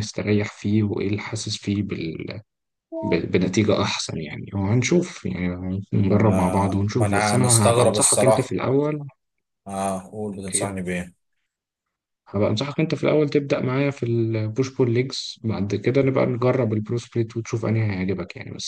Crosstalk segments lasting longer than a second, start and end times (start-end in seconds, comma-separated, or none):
6.1-8.6